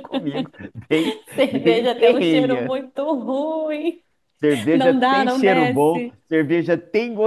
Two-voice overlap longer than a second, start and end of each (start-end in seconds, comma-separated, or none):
1.3-2.7, 4.7-6.2